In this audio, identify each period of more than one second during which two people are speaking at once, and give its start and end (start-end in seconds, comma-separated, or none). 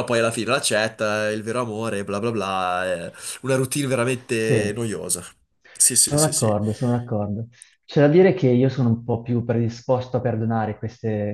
none